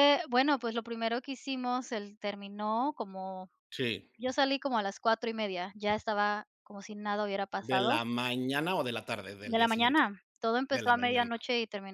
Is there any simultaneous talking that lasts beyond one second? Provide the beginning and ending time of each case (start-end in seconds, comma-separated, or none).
none